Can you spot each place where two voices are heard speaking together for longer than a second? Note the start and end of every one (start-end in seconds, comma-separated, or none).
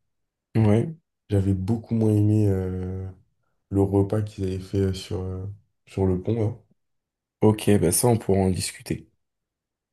none